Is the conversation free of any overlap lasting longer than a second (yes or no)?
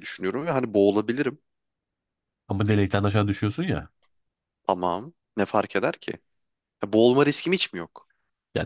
yes